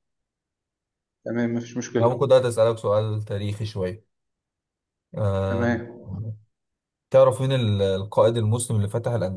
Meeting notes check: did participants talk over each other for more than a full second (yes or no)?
no